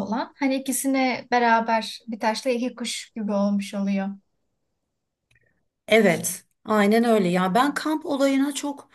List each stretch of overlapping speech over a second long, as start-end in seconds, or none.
none